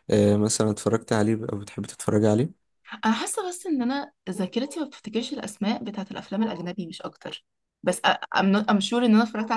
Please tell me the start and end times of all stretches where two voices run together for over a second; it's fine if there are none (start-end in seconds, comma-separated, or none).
none